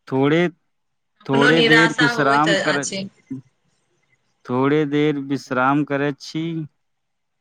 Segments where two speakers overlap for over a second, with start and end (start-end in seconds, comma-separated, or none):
1.0-2.9